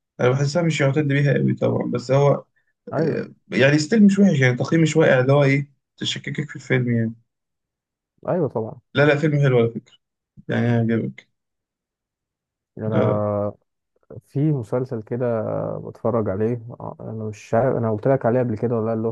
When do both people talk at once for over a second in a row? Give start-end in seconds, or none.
none